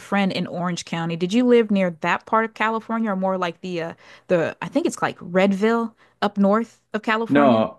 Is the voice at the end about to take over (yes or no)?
yes